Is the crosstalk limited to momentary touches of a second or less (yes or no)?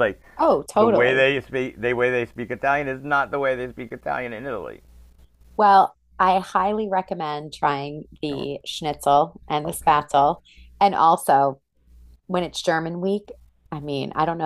yes